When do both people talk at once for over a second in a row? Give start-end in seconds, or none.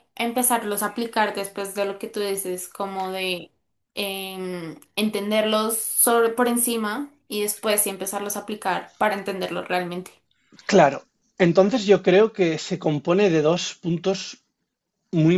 none